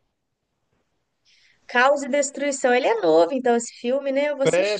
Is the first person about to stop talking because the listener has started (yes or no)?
yes